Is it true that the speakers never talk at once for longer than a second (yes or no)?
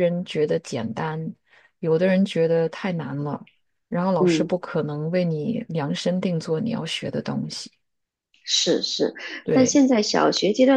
yes